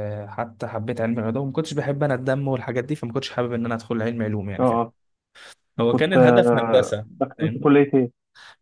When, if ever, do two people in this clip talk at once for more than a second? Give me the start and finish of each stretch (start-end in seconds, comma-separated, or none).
5.9-7.7